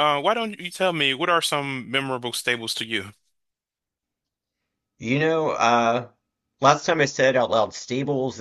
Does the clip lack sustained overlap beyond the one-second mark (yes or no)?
yes